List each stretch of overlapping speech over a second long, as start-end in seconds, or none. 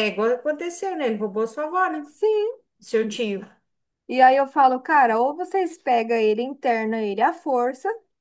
none